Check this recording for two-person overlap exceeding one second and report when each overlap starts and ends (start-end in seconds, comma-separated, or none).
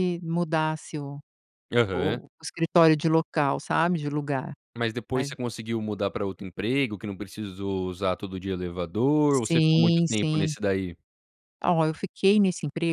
9.3-10.5